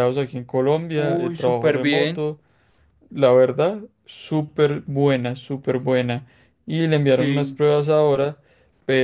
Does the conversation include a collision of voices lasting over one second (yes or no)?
yes